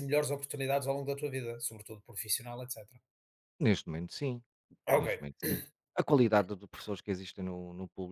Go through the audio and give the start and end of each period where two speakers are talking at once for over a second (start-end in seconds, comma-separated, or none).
none